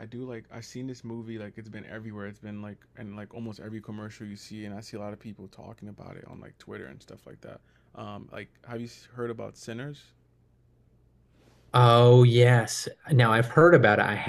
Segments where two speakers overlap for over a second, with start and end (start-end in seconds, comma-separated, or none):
none